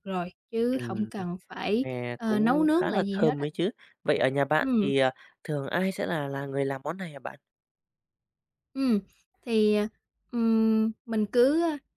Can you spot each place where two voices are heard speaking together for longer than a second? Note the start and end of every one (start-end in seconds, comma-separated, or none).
1.8-3.5